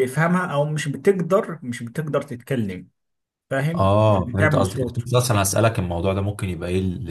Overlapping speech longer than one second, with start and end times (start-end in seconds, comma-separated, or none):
3.7-5.0